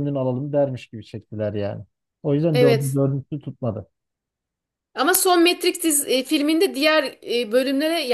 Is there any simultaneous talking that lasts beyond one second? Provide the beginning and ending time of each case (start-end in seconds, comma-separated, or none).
none